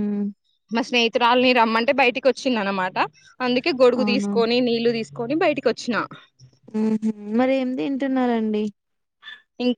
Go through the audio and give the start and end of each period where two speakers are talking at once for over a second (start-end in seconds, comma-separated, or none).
none